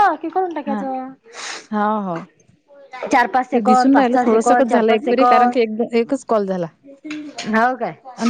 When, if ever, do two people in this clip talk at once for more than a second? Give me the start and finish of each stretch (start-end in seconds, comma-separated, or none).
3.5-5.6